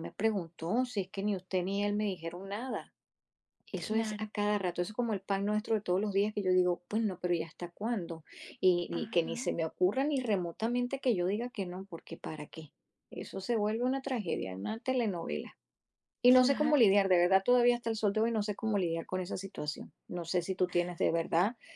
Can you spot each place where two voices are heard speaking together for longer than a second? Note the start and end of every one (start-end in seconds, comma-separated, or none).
none